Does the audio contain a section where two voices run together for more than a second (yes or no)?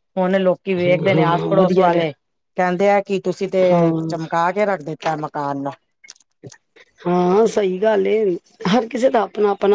yes